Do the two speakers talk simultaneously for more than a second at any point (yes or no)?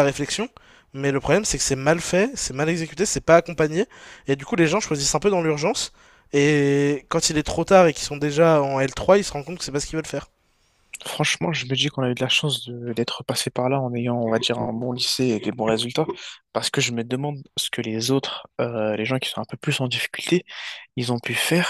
no